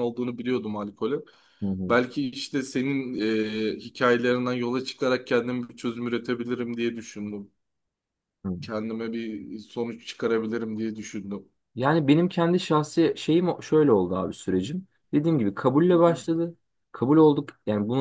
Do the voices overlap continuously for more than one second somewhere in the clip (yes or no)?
no